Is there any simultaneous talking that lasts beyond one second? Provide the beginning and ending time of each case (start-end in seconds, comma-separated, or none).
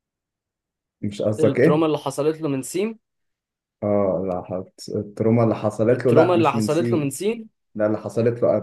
5.9-7.2